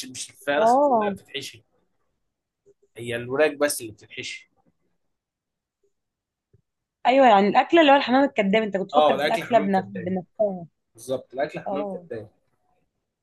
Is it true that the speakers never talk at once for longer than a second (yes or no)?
no